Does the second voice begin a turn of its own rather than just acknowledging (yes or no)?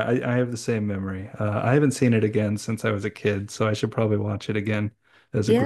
yes